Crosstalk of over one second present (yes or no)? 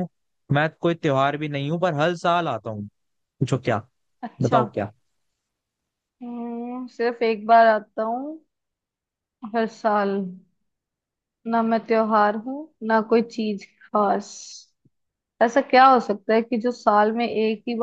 no